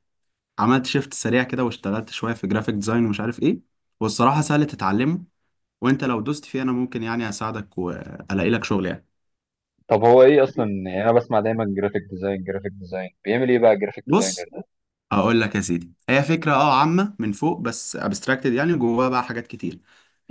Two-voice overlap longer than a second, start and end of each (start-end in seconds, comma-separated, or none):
none